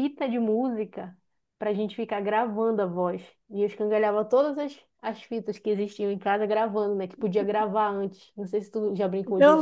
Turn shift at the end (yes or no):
yes